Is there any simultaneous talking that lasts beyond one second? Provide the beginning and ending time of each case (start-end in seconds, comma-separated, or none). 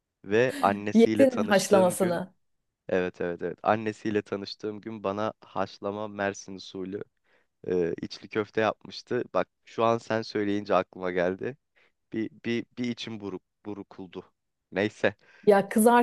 0.9-2.2